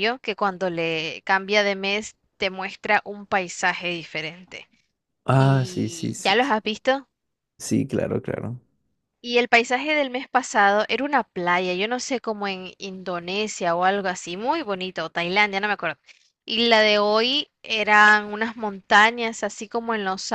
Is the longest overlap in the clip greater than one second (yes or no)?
yes